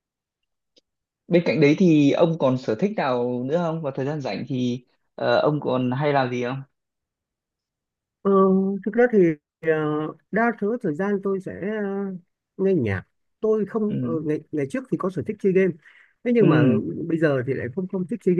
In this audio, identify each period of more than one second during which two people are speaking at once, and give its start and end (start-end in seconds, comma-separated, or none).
none